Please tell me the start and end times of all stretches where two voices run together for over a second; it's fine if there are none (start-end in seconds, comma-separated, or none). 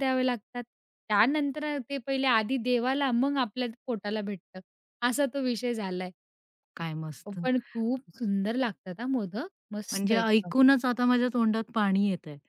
none